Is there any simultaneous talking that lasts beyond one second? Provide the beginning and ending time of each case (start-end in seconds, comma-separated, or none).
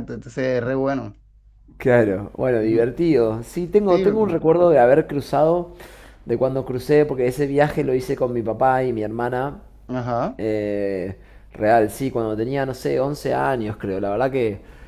none